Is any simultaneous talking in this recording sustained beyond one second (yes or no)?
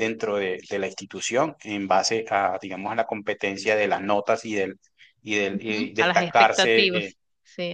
yes